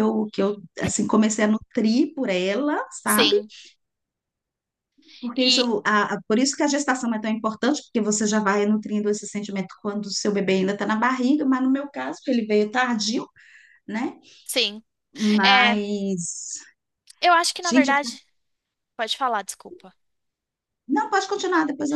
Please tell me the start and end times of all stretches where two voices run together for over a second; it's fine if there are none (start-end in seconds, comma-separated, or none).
none